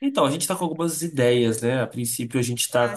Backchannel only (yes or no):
yes